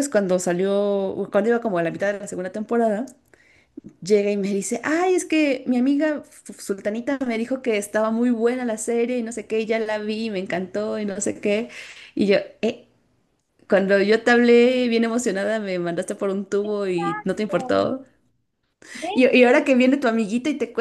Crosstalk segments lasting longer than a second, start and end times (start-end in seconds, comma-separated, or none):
16.6-17.9